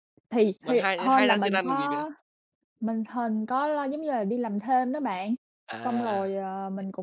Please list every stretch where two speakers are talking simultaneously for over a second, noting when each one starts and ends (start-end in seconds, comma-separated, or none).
0.6-2.0